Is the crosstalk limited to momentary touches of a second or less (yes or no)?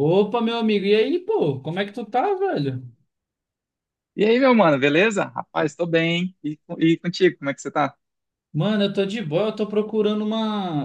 yes